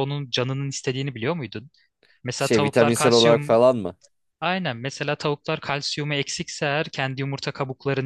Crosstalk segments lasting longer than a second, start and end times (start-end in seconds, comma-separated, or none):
2.4-3.6